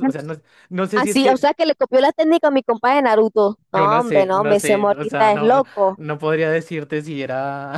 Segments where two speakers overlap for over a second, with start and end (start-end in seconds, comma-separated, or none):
3.7-6.0